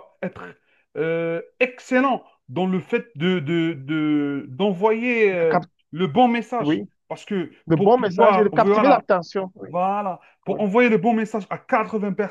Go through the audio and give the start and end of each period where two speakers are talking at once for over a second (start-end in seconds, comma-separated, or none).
7.7-9.0